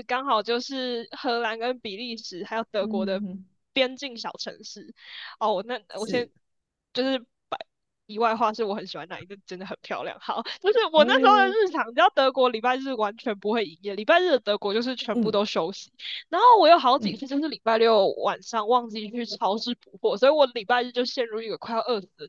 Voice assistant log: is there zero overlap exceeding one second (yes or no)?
yes